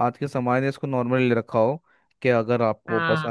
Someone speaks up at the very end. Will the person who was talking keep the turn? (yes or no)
yes